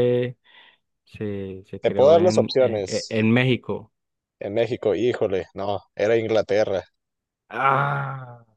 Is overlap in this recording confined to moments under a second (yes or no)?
no